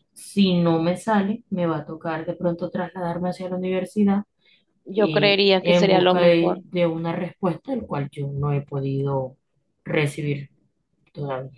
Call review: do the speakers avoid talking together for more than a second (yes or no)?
no